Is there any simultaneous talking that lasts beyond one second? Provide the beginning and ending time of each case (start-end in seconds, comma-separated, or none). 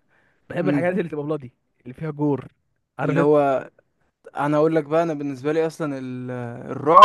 none